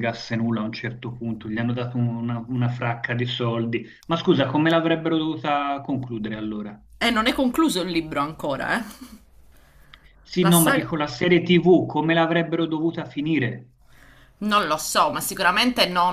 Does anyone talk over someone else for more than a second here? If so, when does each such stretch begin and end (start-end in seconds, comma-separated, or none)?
none